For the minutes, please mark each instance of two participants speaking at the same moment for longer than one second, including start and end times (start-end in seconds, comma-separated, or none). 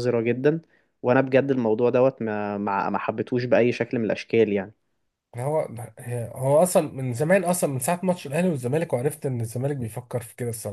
none